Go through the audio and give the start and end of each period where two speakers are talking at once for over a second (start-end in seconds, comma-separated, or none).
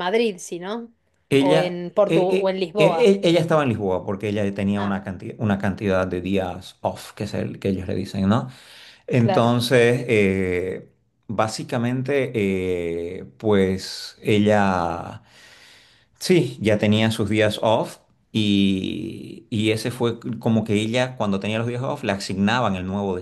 1.4-3.1